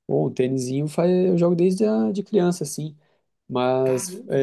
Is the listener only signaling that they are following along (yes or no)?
yes